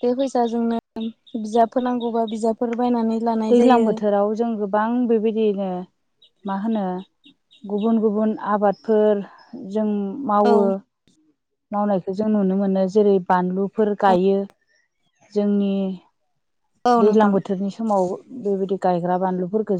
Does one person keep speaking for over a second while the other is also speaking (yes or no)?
no